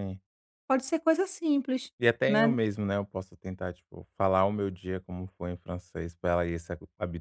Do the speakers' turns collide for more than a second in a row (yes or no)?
no